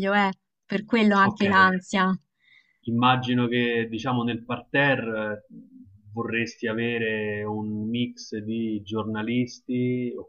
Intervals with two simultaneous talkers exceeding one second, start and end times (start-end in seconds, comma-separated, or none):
none